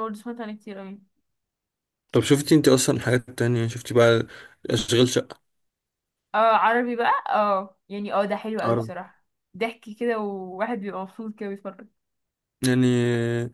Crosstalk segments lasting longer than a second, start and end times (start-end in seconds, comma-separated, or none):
none